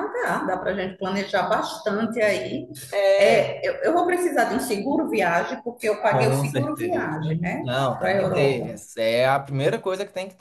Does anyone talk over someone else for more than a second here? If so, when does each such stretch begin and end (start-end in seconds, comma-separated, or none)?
6.1-8.7